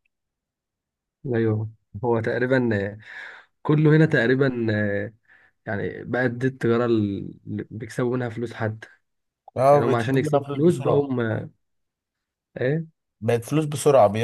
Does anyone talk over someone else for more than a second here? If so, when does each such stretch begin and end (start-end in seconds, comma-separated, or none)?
9.7-11.1